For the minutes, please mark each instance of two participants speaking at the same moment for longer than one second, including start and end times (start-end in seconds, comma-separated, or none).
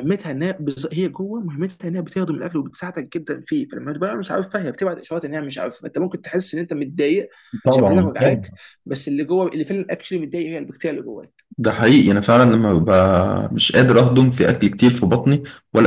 none